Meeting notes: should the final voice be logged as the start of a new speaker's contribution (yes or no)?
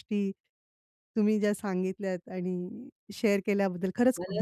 yes